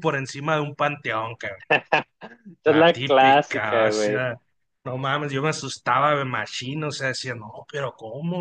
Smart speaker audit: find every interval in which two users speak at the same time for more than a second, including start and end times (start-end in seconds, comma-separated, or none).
2.7-4.3